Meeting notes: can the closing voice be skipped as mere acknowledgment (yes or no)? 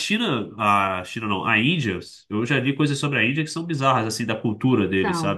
yes